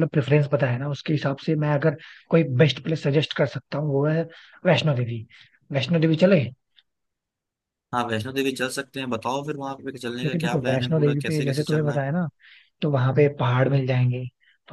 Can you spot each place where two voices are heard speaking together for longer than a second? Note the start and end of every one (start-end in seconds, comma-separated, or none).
10.2-12.0